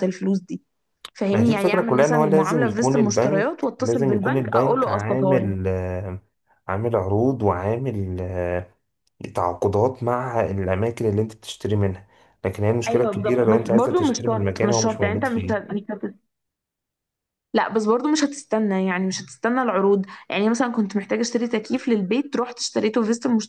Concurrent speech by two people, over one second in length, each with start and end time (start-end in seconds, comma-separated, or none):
1.3-5.5, 12.9-15.7